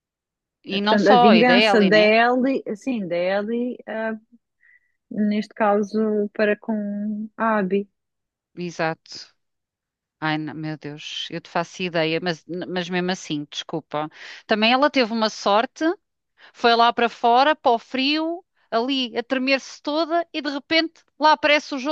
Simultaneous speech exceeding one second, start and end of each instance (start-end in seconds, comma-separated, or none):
0.7-2.1